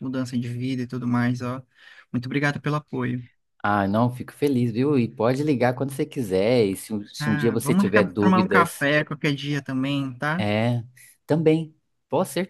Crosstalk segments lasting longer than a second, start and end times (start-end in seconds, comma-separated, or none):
7.2-8.8